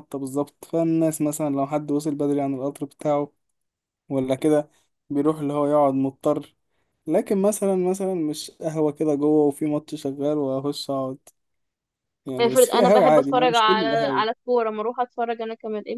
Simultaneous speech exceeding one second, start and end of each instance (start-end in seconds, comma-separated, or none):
12.4-14.2